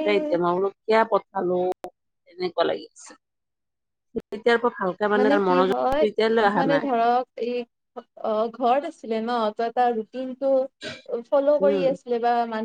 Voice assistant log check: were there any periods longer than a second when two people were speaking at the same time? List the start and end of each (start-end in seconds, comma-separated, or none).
none